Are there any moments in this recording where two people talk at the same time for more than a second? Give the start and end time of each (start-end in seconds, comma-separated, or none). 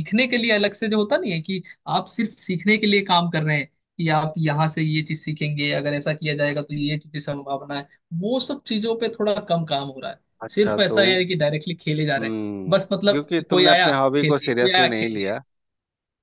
12.2-15.3